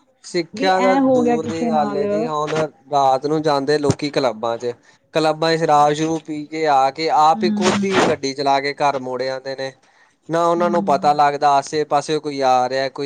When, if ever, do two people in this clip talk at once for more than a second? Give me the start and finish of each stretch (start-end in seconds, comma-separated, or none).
0.6-2.5